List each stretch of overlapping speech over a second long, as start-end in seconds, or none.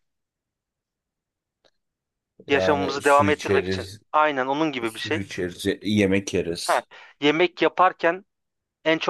2.5-4.0